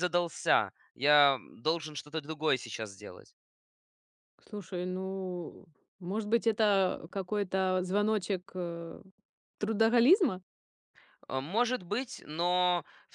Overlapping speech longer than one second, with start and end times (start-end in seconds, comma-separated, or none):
none